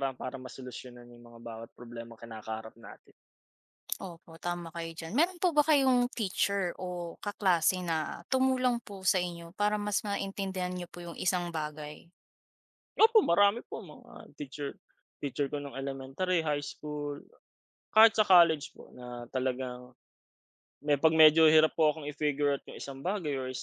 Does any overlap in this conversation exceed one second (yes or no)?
no